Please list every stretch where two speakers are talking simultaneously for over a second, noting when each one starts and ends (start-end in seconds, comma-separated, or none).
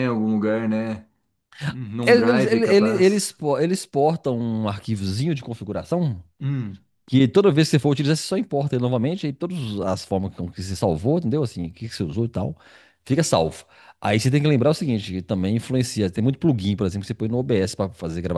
2.0-3.3